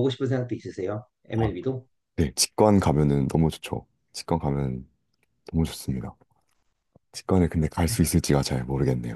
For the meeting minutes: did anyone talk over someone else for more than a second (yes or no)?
no